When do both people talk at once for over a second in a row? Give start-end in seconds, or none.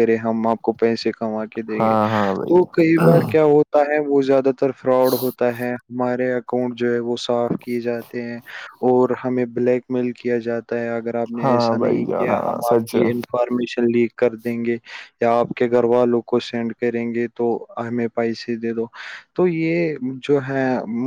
11.4-13.0